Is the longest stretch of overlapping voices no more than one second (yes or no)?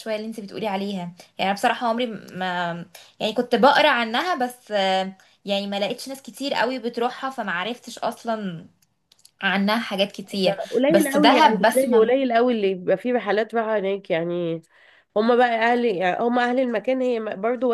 no